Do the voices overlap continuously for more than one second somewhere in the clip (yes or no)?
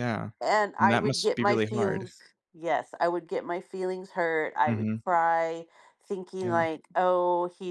yes